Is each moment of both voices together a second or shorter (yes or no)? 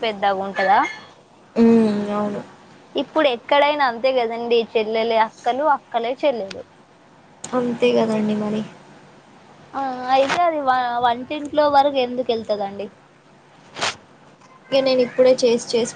yes